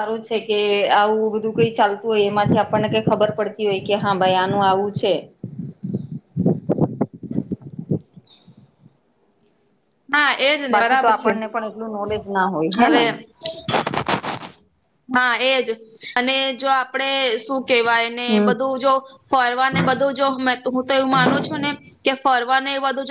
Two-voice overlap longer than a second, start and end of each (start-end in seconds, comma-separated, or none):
none